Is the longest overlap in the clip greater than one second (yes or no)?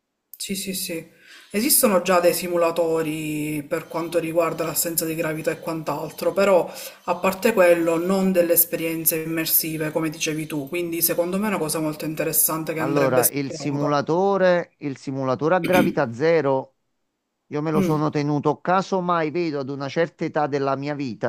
yes